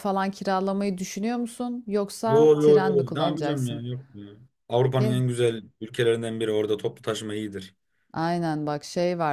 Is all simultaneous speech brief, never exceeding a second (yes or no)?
no